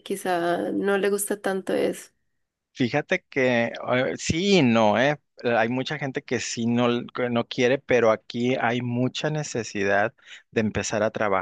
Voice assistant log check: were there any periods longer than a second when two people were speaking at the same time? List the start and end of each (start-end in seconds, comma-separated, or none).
none